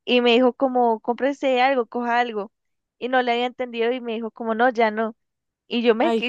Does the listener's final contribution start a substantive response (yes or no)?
no